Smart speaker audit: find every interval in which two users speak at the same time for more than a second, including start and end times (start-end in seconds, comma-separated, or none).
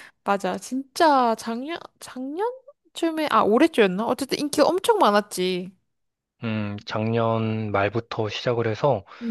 none